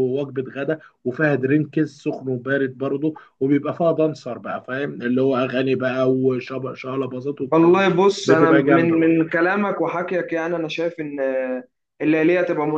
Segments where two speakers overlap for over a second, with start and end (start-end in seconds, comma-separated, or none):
7.5-9.2